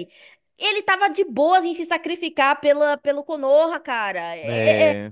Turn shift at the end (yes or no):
no